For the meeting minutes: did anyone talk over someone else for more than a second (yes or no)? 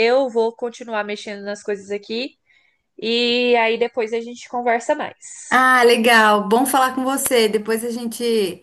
no